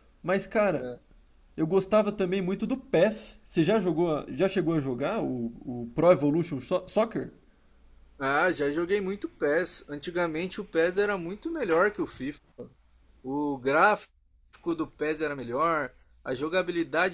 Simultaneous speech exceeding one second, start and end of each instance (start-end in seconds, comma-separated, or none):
none